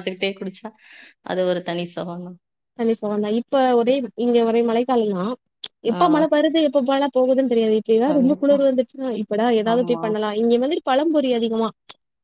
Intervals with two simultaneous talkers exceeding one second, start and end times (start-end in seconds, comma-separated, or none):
none